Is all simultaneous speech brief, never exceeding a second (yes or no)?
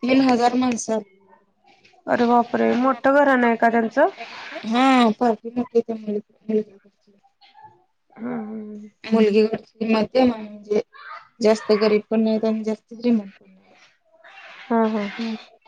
yes